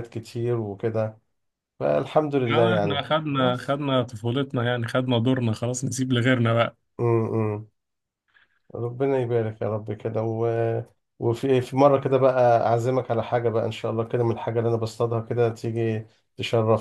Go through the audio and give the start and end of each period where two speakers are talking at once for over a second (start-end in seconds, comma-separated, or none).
2.5-3.8